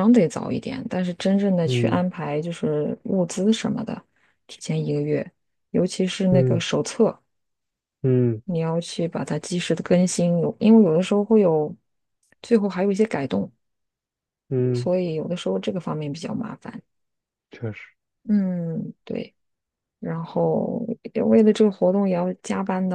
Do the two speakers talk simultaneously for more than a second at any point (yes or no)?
no